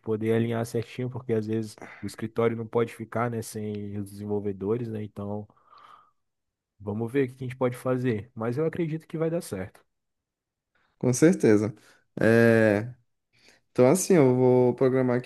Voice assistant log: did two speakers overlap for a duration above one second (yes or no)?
no